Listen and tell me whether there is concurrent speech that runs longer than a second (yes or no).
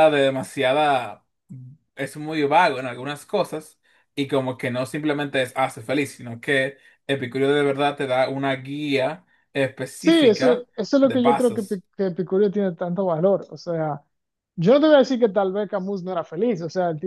yes